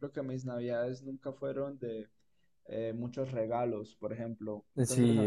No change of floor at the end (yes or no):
yes